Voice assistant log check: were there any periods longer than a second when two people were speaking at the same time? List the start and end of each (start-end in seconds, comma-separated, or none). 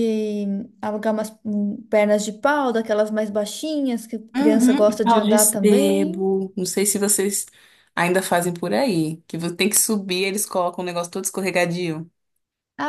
4.4-6.3